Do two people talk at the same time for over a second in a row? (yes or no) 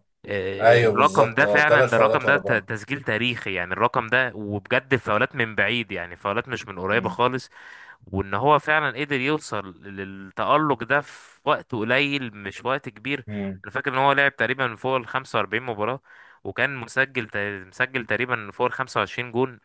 yes